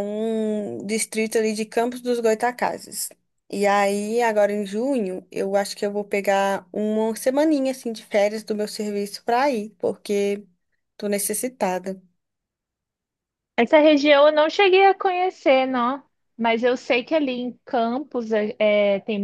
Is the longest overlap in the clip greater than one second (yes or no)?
no